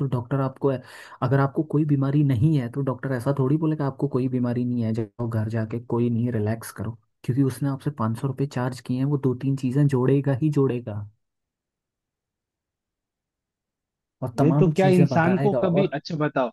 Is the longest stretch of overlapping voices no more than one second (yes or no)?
no